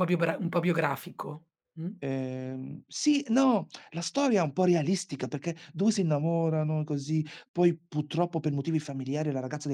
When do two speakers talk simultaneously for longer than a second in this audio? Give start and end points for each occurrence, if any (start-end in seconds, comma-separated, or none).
none